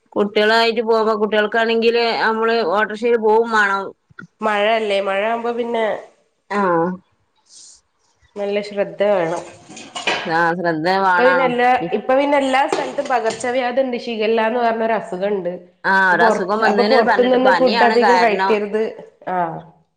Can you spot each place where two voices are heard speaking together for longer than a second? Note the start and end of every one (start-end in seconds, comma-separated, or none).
16.1-18.5